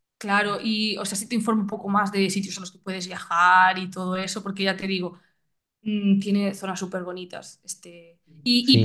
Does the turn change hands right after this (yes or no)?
no